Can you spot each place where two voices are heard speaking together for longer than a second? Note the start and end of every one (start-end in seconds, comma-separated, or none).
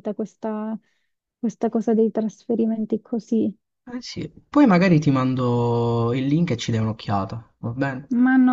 none